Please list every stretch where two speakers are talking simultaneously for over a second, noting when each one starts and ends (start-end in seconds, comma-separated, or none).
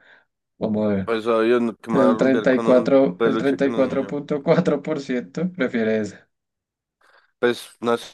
1.9-4.2